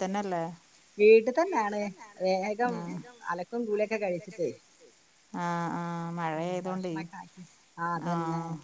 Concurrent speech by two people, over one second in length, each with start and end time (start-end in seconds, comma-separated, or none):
none